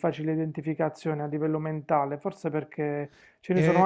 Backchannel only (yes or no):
yes